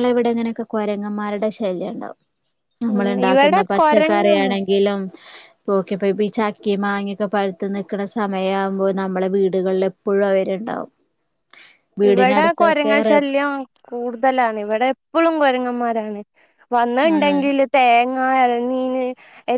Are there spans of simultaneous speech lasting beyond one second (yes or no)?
yes